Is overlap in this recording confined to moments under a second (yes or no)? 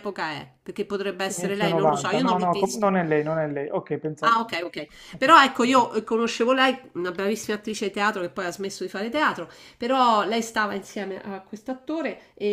no